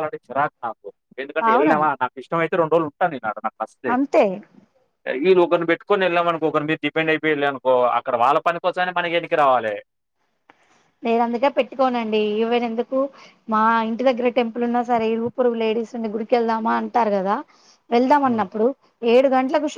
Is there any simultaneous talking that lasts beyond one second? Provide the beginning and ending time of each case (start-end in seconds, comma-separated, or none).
none